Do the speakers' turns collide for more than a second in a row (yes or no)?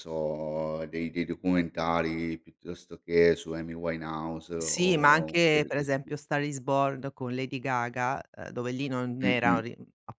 yes